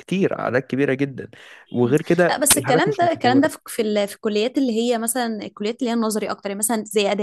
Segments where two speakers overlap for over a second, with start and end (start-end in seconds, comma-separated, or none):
1.8-3.5